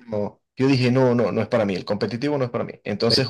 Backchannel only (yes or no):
yes